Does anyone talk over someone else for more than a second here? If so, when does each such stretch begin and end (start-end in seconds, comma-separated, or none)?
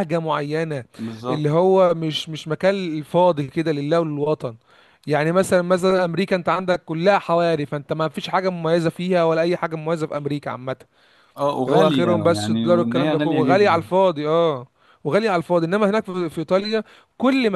11.7-13.9